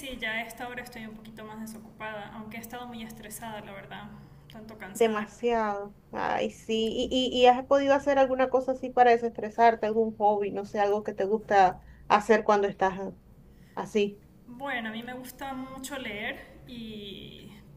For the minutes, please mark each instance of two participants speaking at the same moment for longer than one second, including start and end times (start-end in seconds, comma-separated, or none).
none